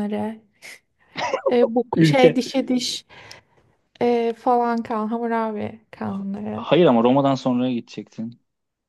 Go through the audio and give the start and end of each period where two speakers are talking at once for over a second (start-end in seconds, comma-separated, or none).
none